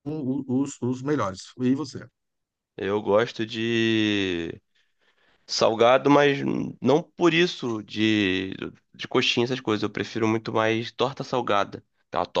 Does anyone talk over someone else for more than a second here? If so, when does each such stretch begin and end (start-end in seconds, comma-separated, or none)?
none